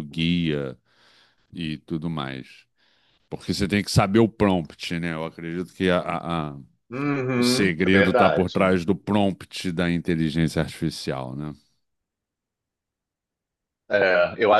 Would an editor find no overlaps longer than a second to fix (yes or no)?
no